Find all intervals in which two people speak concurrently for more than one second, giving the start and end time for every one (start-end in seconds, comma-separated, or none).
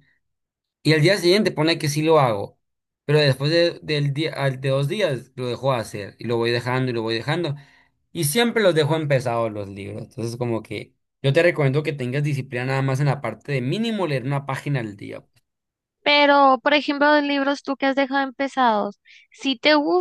none